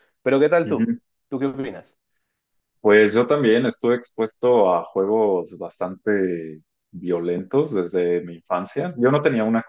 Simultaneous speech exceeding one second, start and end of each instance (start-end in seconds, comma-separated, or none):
none